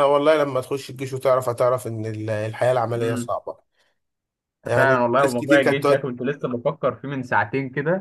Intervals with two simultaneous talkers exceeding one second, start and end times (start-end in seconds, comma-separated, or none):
4.8-6.1